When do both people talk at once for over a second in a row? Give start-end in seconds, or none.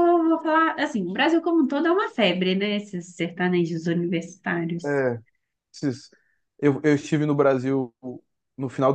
none